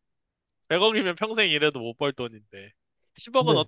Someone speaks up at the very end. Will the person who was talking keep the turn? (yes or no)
yes